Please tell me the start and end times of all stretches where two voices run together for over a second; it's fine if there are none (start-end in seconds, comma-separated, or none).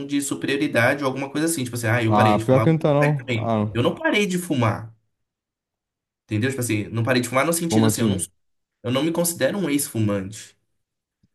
2.1-3.8